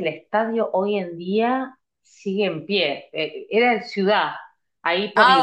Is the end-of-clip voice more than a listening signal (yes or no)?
no